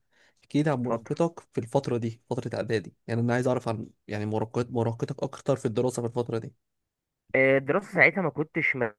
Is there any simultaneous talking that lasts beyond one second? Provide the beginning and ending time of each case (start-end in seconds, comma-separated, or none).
none